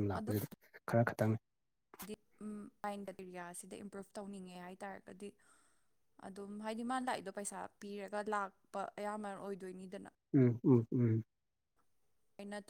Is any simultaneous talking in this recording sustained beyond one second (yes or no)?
no